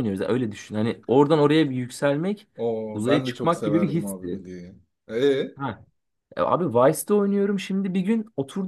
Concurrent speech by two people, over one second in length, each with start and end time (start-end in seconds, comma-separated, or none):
2.9-4.4